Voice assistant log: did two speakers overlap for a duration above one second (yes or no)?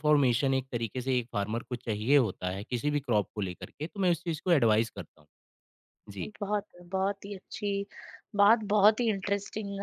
no